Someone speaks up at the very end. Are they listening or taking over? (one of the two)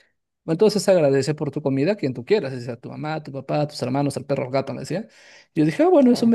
listening